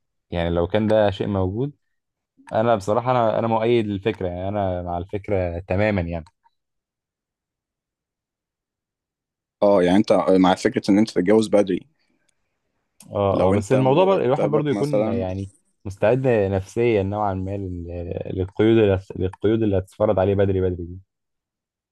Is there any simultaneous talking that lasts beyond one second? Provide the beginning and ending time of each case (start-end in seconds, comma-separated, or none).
13.3-15.3